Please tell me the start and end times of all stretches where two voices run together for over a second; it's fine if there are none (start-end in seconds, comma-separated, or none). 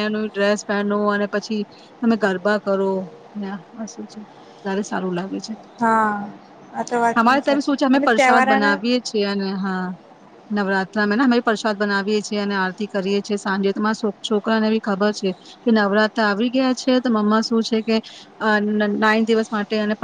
7.2-8.8